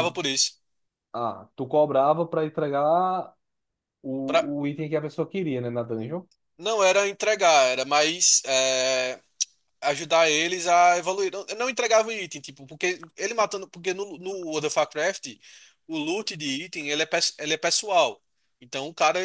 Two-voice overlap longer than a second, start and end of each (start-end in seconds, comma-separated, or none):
none